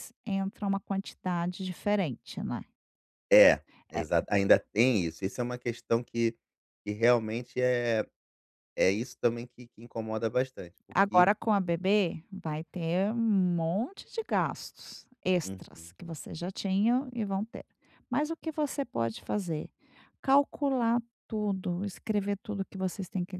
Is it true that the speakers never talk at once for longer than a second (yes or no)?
yes